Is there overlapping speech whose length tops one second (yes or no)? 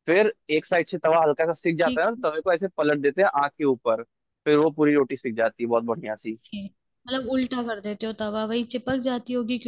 no